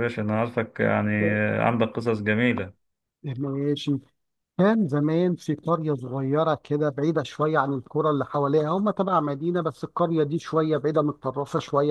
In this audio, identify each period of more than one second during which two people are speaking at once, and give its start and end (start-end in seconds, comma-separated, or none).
none